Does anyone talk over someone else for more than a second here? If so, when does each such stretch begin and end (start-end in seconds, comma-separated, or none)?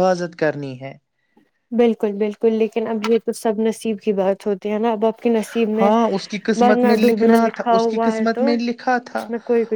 6.6-8.5